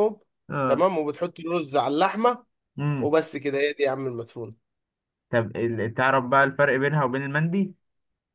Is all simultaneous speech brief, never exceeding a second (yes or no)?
yes